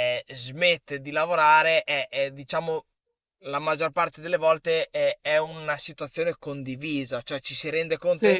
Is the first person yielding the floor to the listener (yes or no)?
no